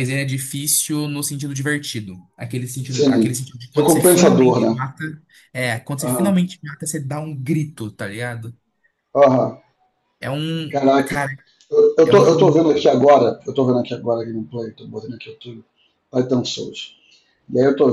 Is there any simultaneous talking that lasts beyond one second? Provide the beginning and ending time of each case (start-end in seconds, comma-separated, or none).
2.9-4.8